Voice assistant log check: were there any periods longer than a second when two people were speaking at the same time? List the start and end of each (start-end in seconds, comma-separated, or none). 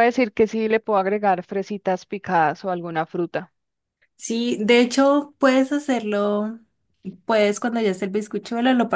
none